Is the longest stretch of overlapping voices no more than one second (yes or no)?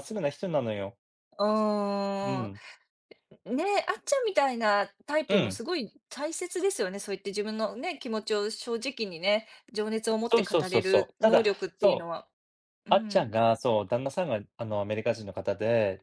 no